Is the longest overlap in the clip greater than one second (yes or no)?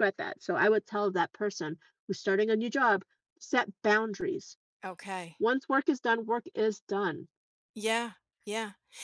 no